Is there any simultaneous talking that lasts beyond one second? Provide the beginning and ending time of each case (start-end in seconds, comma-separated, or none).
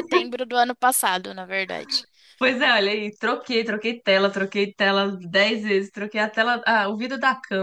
none